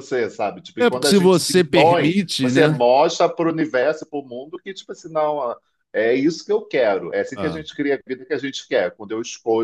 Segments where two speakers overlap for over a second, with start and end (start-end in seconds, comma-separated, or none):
0.8-2.8